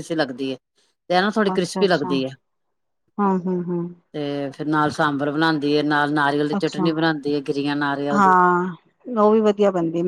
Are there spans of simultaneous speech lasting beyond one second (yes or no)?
no